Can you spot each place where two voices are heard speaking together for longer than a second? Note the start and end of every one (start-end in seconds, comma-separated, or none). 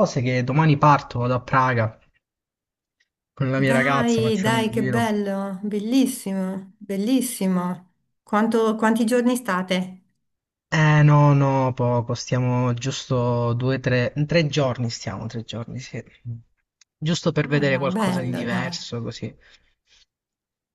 3.6-5.1, 17.4-18.8